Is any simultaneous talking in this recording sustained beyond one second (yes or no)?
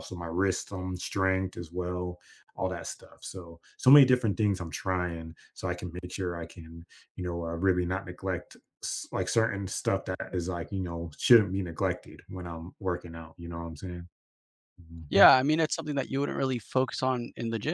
no